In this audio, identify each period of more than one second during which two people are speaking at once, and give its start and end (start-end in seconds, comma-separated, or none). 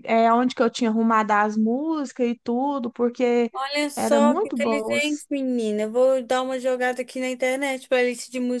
4.0-5.2